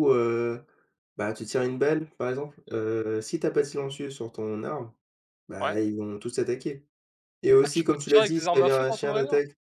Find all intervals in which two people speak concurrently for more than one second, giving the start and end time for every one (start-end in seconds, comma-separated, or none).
7.6-9.3